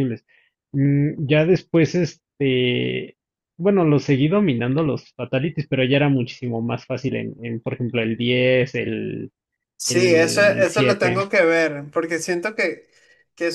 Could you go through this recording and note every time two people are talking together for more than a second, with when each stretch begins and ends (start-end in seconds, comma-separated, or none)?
9.8-11.2